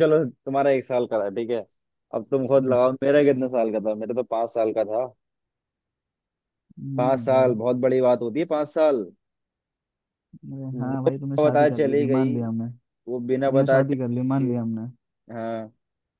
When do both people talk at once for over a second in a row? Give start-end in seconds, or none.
10.7-12.4, 13.5-14.8